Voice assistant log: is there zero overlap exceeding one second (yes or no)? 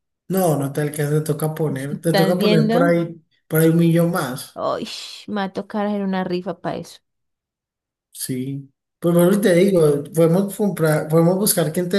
no